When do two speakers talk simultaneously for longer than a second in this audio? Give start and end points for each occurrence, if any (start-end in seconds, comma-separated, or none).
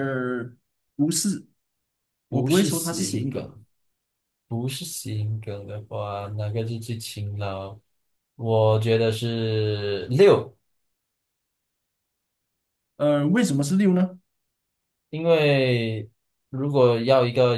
2.3-3.5